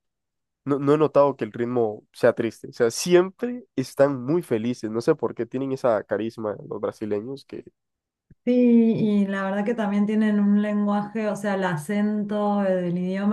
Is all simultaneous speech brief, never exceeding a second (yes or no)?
yes